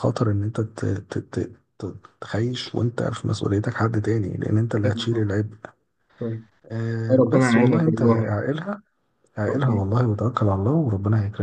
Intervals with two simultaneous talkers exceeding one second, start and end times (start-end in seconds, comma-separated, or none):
7.1-8.4